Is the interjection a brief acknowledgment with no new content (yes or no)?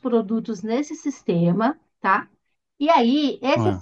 yes